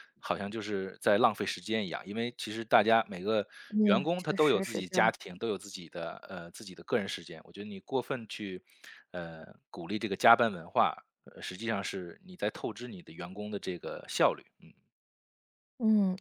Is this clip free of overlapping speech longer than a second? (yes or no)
no